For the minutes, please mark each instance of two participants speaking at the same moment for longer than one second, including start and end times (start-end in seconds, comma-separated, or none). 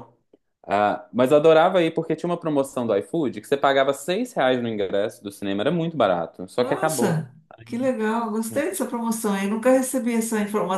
none